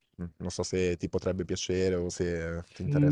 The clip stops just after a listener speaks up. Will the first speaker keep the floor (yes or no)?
no